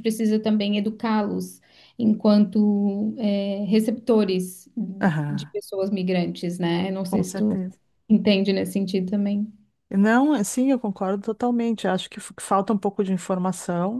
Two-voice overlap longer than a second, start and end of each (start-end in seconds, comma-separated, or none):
none